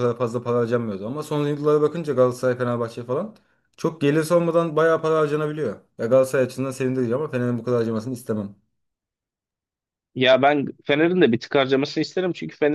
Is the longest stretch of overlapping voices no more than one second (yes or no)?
yes